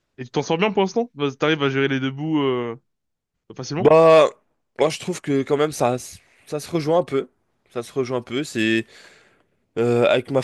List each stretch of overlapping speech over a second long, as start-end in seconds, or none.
none